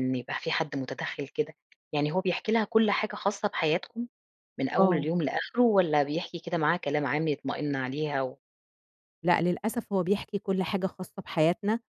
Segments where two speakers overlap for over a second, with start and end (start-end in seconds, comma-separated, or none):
none